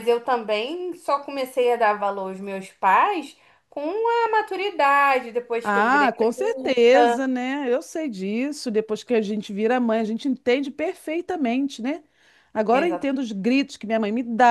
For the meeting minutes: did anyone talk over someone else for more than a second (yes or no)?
yes